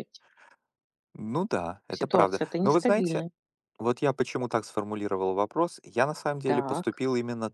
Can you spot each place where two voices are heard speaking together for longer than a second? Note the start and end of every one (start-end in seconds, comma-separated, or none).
2.0-3.2